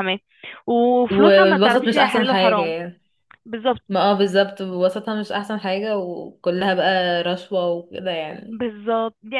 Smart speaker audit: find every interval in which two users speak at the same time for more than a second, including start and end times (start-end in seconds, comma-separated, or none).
1.1-2.8